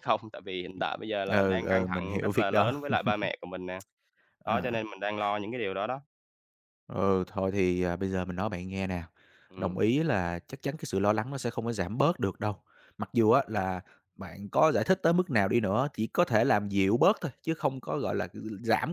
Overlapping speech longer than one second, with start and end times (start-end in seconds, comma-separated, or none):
1.3-2.7